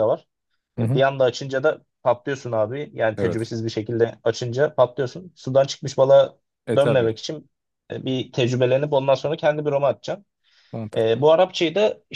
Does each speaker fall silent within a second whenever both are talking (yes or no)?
yes